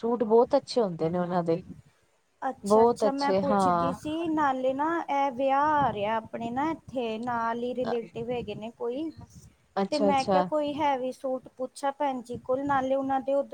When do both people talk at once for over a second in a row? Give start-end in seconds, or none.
2.7-3.9